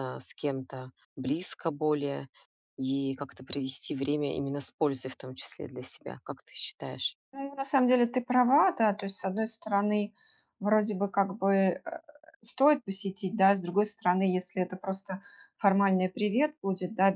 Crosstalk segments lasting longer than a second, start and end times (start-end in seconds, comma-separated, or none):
none